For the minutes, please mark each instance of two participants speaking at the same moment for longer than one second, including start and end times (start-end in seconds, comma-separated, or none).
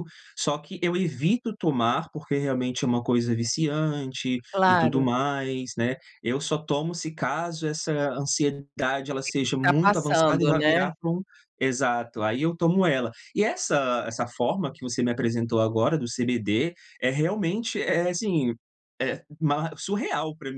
9.2-10.9